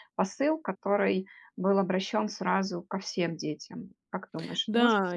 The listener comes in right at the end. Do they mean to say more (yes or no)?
yes